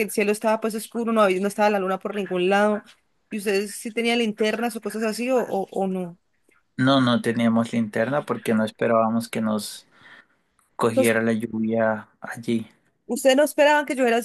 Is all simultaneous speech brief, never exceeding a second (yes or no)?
yes